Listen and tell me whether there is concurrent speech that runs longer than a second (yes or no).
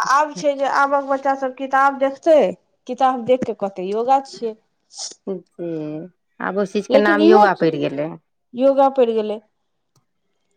no